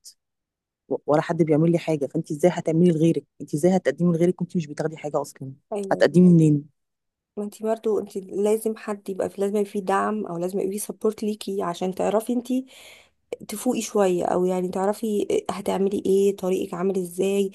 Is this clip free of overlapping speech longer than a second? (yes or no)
yes